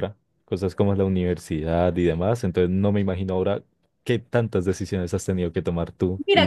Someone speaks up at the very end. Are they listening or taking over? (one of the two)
taking over